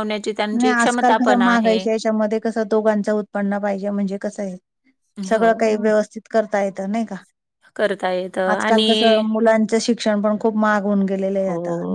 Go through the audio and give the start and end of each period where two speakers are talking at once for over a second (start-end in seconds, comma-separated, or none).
none